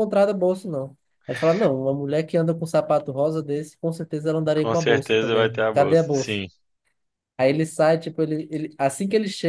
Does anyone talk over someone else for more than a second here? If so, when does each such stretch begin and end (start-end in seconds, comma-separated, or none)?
4.5-6.4